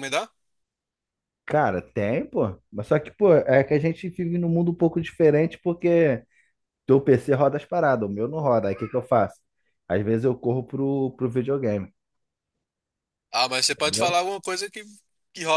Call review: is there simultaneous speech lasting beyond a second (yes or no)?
no